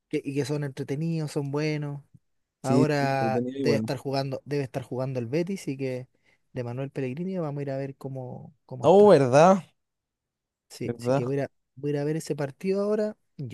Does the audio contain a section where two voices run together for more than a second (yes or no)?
yes